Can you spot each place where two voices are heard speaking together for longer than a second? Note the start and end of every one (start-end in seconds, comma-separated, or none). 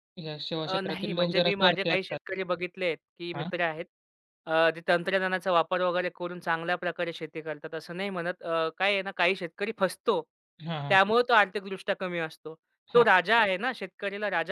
0.6-2.2